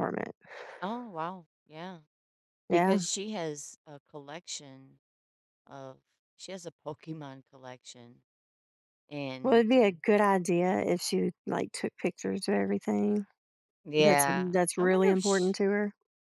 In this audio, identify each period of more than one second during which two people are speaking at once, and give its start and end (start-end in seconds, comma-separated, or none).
14.0-15.6